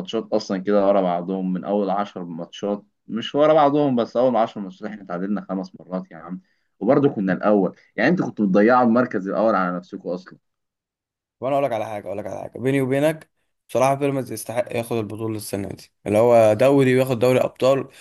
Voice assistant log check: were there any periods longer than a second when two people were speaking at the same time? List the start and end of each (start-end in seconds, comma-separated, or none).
none